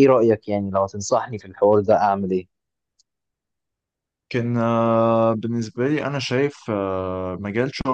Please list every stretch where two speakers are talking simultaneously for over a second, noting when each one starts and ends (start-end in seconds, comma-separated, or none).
none